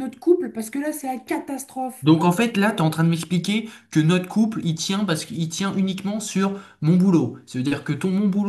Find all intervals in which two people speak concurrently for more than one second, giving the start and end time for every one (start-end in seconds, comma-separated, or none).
none